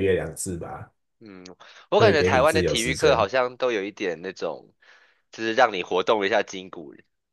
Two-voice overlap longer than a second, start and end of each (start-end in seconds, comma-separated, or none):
1.9-3.3